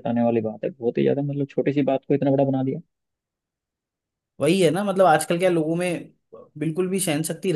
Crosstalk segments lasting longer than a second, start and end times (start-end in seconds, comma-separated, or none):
none